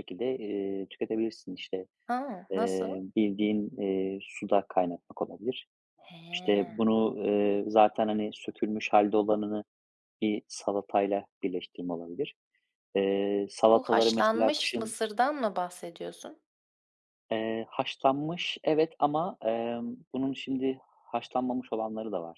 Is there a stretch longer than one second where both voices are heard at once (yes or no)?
yes